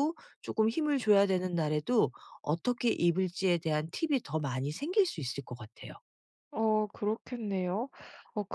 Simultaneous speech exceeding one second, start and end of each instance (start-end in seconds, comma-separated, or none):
none